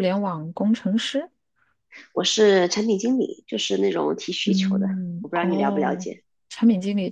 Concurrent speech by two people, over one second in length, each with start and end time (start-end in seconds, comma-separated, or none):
4.5-6.1